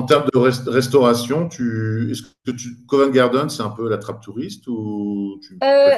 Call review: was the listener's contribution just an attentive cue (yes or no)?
no